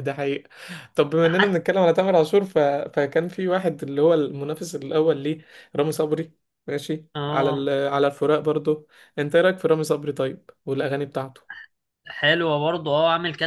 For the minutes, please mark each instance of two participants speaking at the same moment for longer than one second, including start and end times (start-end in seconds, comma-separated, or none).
none